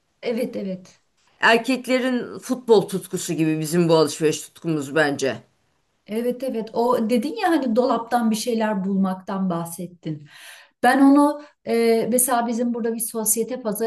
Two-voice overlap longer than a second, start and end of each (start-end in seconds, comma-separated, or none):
none